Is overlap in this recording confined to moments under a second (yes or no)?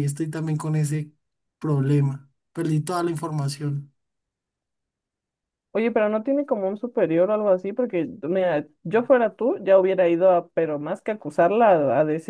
yes